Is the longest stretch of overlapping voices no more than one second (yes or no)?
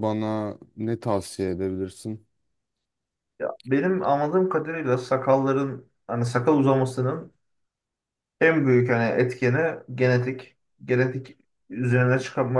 yes